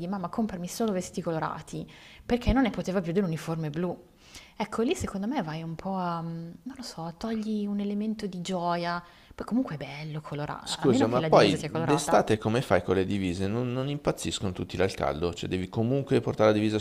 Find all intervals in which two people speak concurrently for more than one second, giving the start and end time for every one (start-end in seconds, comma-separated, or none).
10.6-12.3